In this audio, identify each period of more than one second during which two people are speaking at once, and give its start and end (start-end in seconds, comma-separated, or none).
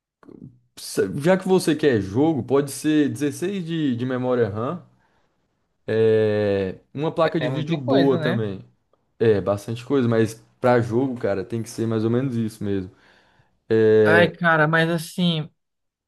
7.2-8.4